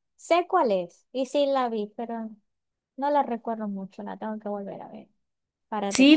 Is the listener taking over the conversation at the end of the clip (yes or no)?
yes